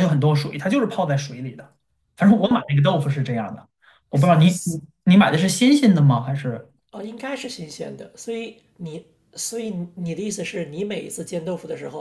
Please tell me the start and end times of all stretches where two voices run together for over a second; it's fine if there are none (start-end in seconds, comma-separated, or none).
none